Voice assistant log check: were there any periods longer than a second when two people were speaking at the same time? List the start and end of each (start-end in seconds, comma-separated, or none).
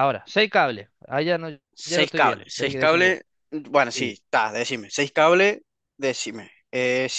1.8-3.2